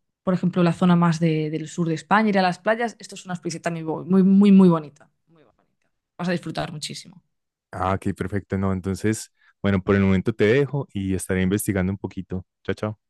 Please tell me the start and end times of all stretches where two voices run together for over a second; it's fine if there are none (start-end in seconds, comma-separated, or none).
none